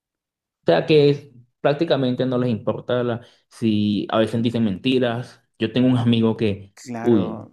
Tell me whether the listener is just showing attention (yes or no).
yes